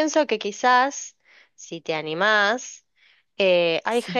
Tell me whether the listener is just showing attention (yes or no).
yes